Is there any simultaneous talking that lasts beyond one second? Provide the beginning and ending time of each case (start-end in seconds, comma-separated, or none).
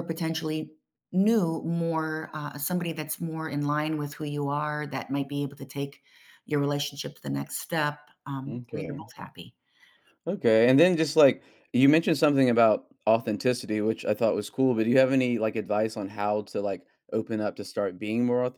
none